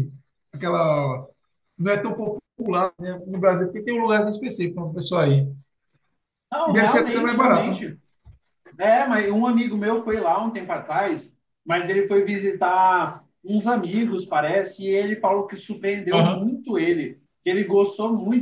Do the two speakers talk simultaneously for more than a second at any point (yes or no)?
yes